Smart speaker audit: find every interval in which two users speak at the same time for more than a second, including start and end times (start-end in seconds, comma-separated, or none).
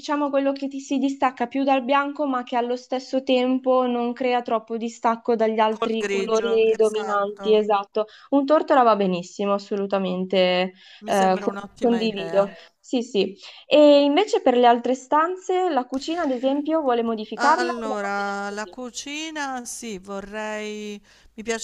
5.7-7.6, 11.0-12.6, 17.4-18.8